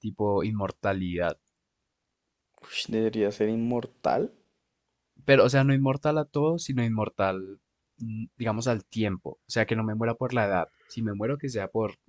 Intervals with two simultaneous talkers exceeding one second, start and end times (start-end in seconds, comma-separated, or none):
none